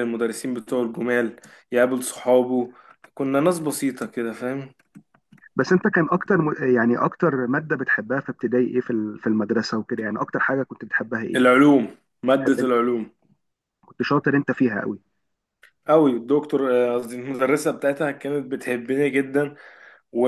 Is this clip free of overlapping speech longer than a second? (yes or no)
yes